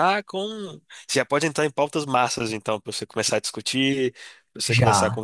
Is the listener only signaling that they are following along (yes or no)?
yes